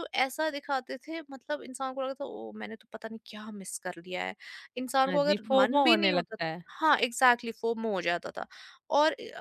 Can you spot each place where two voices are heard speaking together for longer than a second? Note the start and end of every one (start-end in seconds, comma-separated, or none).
5.1-6.6